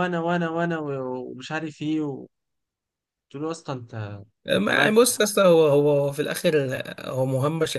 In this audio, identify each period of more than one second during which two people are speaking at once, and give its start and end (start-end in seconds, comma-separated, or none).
none